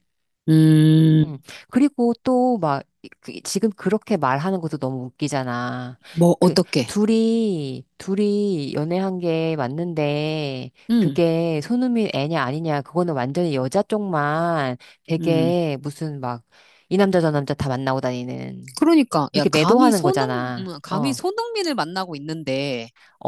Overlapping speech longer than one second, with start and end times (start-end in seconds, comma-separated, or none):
19.3-21.2